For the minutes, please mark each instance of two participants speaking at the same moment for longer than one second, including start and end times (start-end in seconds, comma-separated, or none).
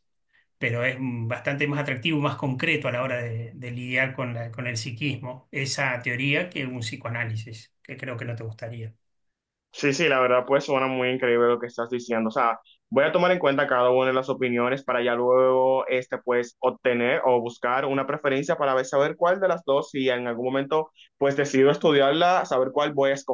none